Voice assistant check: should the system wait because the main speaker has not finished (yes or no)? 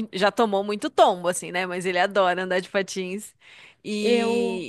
yes